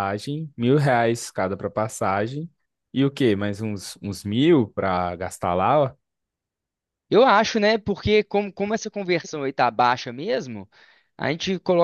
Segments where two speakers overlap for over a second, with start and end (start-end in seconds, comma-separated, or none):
none